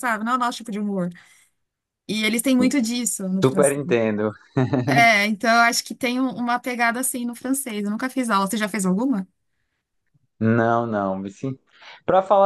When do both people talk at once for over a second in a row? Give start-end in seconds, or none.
none